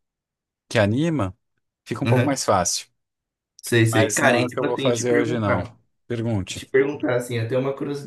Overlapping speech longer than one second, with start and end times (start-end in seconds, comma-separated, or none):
3.9-5.6